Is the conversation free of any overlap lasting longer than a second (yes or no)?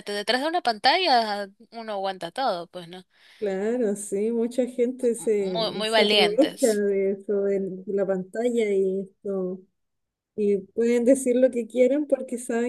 no